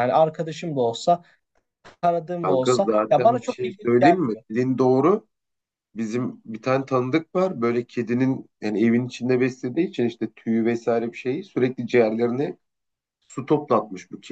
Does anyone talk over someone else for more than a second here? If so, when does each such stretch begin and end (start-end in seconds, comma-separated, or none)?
2.4-4.4